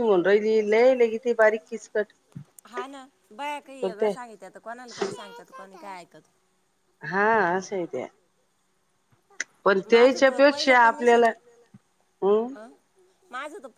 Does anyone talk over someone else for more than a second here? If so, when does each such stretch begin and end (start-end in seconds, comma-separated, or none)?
9.9-11.2